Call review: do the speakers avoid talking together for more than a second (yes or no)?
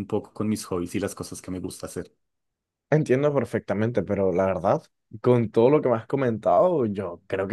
yes